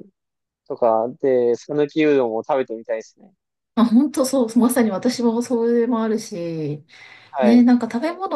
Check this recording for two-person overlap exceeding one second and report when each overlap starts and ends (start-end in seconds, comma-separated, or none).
none